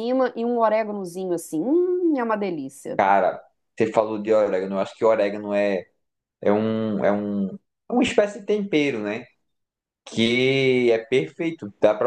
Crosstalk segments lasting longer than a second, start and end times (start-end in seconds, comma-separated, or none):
none